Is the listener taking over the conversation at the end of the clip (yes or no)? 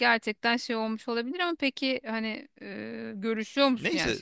yes